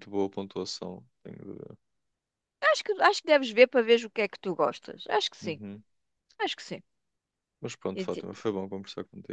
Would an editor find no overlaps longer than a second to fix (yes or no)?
yes